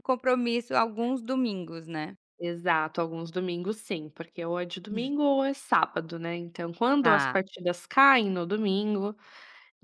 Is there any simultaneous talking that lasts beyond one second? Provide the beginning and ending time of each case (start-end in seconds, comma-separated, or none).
none